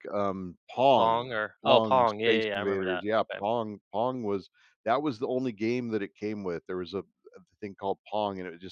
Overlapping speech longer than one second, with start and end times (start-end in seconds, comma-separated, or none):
0.9-3.4